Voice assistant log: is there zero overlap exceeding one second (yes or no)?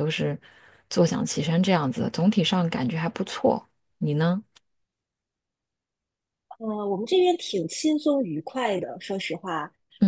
yes